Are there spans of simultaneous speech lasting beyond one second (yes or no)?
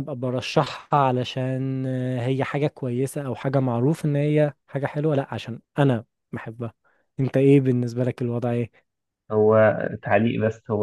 no